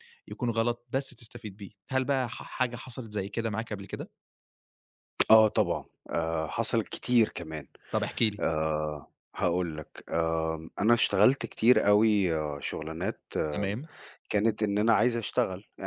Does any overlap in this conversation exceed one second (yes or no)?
no